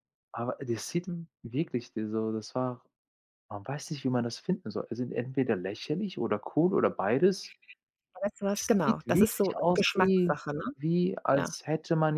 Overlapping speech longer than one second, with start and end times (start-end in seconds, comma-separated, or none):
8.5-10.3